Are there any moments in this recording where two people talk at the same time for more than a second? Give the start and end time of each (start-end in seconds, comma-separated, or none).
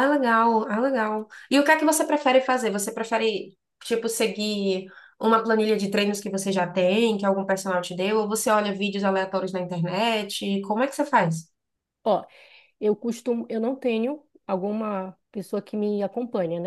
none